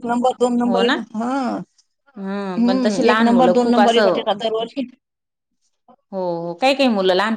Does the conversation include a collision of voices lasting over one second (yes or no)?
yes